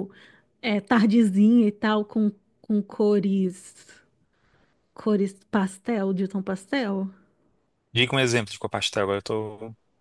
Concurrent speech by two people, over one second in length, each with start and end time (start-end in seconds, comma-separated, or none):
none